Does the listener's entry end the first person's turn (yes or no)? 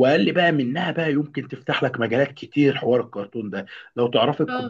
no